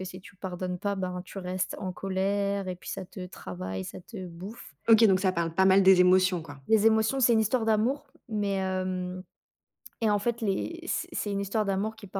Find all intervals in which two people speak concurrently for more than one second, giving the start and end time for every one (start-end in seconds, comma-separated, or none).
none